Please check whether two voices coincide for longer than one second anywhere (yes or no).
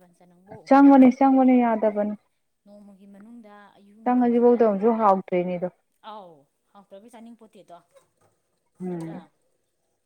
no